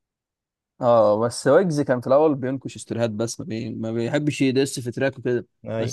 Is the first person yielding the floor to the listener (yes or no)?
no